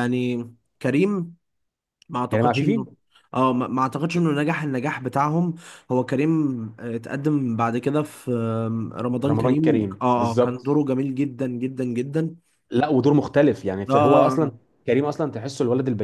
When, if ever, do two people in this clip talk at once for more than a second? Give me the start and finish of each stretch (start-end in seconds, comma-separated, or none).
9.3-10.8